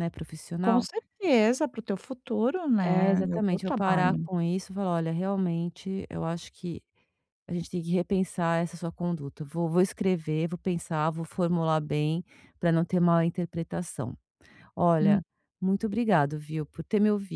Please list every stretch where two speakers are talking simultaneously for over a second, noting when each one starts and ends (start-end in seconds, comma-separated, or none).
2.8-4.3